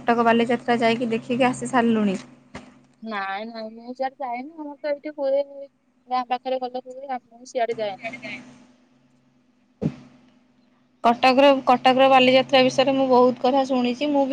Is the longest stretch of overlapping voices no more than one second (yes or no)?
yes